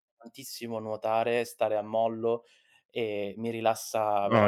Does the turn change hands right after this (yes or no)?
yes